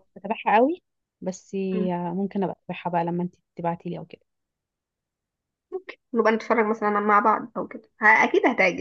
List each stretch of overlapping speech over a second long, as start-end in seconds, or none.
none